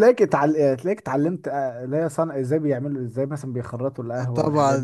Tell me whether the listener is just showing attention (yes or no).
no